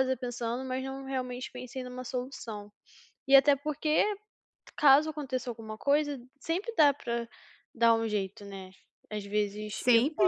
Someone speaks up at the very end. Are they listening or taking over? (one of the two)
taking over